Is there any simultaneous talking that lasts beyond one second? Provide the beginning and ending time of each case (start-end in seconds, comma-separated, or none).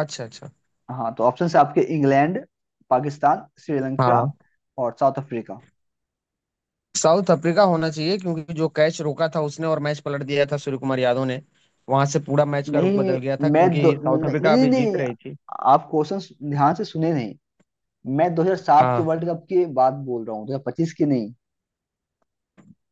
12.7-15.0